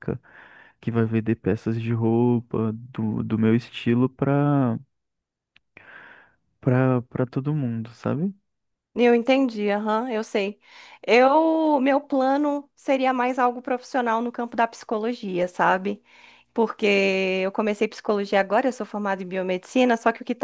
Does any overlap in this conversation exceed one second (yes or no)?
no